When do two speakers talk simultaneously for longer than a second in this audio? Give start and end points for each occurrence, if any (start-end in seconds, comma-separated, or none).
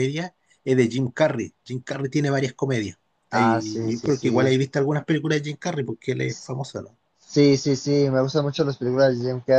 3.3-4.6